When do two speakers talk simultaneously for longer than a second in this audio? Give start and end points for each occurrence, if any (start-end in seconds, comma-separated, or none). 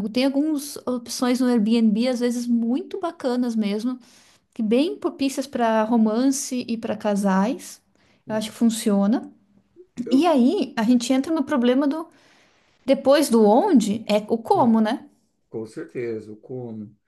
none